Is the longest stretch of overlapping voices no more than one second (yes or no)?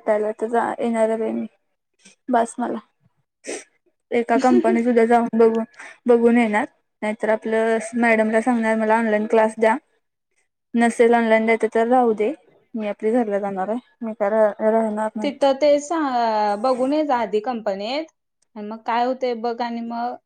yes